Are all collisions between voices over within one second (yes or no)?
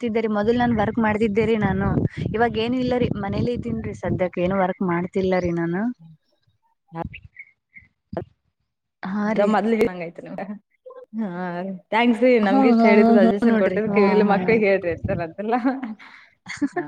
no